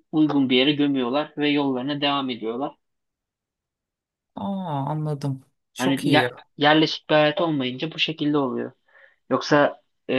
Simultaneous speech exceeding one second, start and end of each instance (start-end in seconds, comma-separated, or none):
none